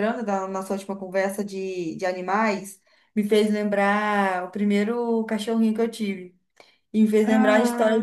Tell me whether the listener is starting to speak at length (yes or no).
no